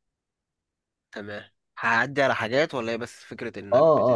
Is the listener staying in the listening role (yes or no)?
no